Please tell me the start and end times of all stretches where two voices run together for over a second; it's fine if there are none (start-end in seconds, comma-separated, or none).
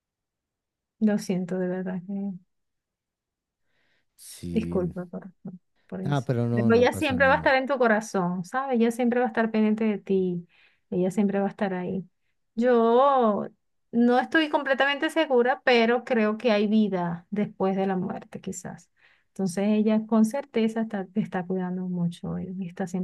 6.0-7.5